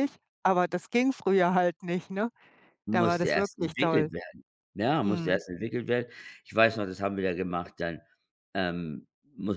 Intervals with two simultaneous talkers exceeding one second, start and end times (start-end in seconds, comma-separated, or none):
2.9-4.1